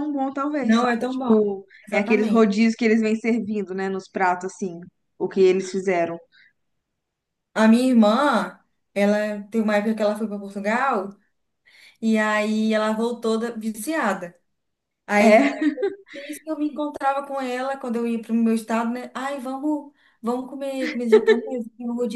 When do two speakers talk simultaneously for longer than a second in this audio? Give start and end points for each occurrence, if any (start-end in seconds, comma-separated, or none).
0.6-2.5